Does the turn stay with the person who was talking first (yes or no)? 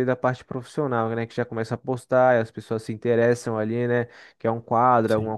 yes